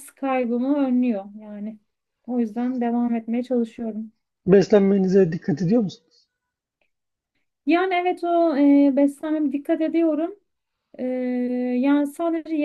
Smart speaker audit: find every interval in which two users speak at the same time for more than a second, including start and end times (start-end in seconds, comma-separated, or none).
none